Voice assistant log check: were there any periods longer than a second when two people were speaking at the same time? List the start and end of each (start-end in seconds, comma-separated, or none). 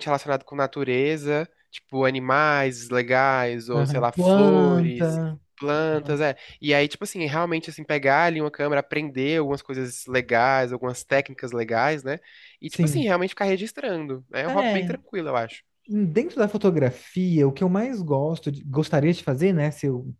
3.8-5.2